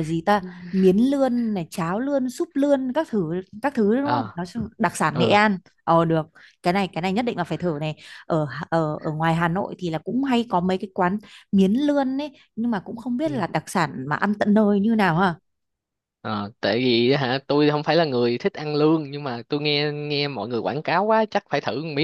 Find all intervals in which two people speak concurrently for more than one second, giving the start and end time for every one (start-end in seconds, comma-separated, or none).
none